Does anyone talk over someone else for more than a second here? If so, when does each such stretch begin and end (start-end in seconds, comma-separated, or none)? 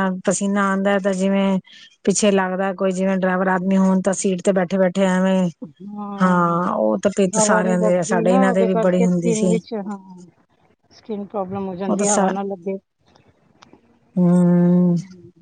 7.3-9.5